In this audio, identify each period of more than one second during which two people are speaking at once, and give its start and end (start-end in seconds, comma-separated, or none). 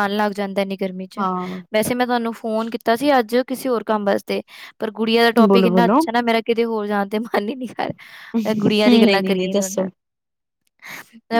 8.3-9.8